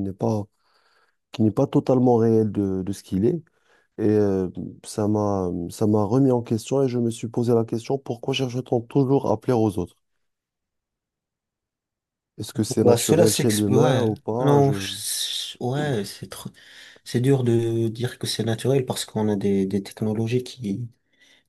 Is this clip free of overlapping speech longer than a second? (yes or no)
no